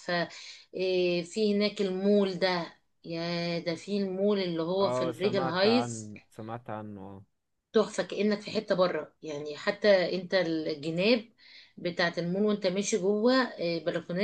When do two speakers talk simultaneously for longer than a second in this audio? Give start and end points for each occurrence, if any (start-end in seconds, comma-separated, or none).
4.8-6.1